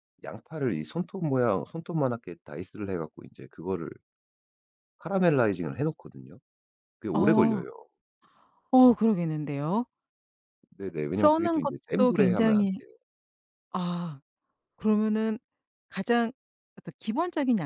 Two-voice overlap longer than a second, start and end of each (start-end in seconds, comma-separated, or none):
11.1-12.8